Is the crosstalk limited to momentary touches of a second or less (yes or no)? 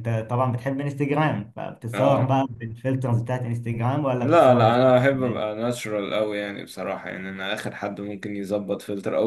no